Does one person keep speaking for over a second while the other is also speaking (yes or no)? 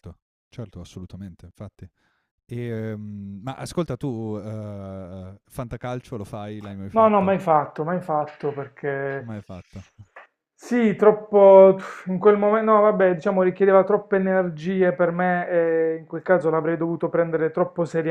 no